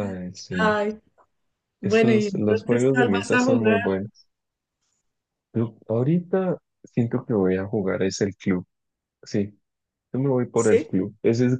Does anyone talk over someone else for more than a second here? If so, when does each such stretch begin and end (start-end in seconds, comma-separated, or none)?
1.8-3.8